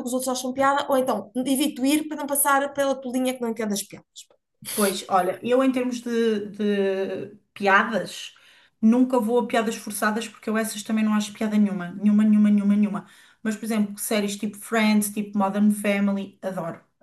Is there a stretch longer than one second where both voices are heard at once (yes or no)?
no